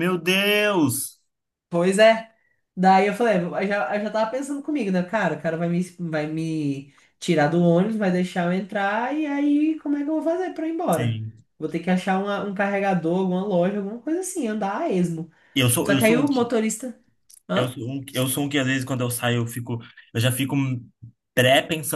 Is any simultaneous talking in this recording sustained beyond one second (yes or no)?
no